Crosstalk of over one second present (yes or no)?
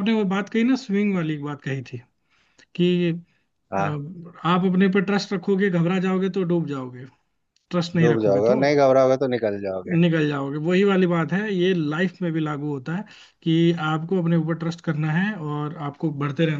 no